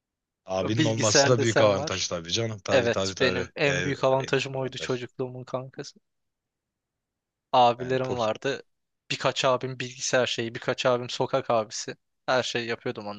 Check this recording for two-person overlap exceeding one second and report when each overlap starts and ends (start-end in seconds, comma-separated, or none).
0.8-2.0, 2.7-5.0